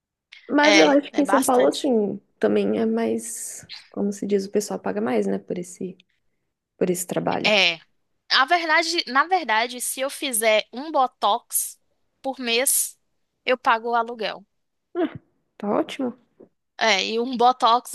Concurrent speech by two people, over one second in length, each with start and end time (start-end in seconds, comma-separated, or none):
0.6-1.9